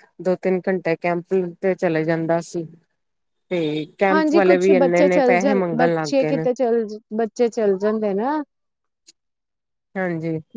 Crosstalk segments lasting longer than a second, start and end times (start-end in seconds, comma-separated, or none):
4.1-6.4